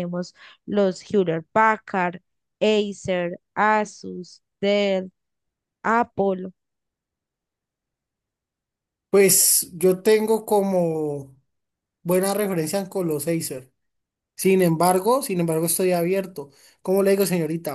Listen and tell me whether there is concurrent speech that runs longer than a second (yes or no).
no